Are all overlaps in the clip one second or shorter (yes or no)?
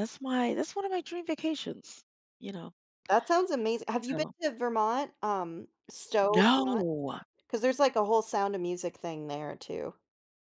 yes